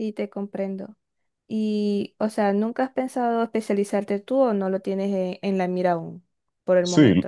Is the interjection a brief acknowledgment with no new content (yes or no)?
no